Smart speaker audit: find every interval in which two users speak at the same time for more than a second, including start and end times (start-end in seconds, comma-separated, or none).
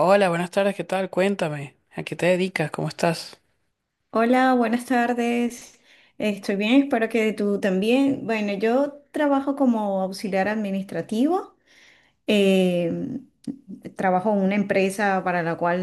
none